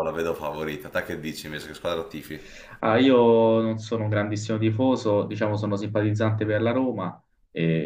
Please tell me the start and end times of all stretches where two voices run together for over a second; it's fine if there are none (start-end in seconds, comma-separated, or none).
none